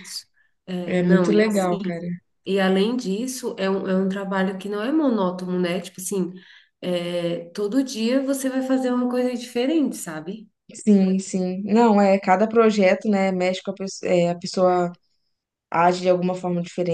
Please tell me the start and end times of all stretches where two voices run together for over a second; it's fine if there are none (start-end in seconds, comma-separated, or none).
0.8-2.0